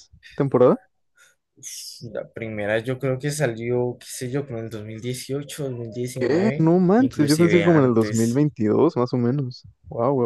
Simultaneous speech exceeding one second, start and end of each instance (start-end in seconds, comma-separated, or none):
6.2-8.4